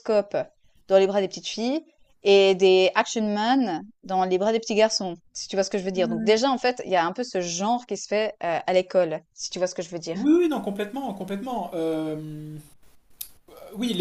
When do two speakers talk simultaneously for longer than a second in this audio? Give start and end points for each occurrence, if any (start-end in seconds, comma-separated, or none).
none